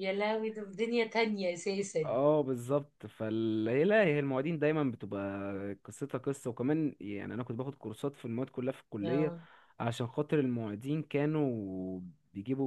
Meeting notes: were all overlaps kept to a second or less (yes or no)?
yes